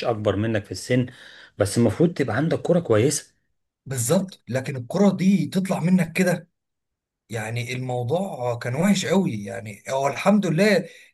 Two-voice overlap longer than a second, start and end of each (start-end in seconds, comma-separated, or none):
none